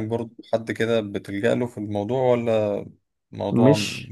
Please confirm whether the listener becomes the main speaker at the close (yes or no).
yes